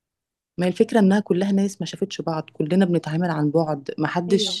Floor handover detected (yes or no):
no